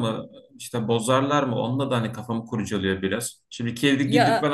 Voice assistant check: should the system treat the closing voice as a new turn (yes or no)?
no